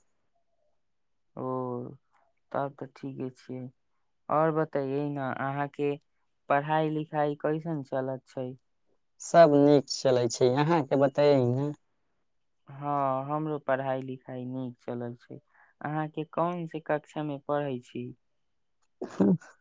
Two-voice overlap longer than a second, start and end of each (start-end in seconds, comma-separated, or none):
none